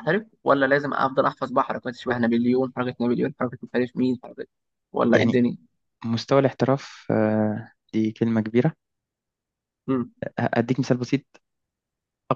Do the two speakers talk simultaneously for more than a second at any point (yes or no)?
no